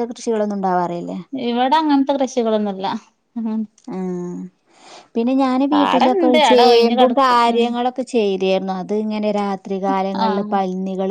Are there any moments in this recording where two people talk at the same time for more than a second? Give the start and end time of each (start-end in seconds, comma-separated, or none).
5.7-7.6